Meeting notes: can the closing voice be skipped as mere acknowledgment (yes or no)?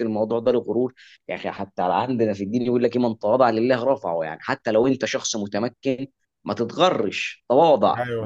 yes